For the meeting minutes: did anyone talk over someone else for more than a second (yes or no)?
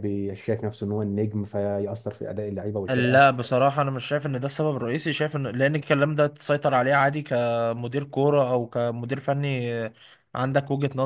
no